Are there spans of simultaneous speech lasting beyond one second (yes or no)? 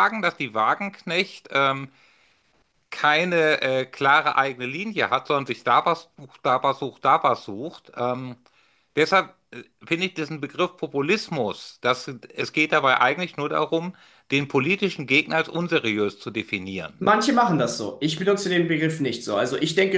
no